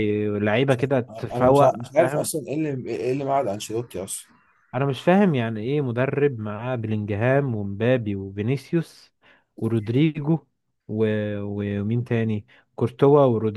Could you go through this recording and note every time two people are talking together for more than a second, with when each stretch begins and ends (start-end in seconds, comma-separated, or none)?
0.7-2.3